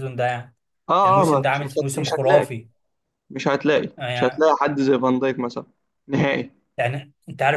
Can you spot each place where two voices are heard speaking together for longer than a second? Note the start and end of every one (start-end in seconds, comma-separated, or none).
1.1-2.5